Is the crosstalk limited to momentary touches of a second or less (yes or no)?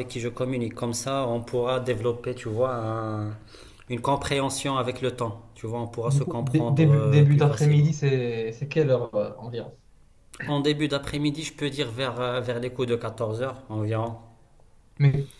no